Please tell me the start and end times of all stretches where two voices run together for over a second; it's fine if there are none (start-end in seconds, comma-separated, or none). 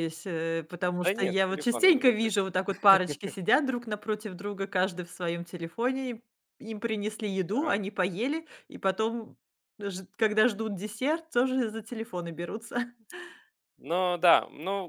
1.0-2.4